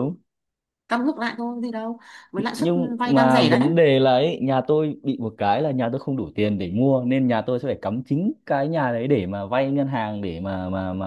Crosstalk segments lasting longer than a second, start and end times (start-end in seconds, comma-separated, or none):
2.4-3.7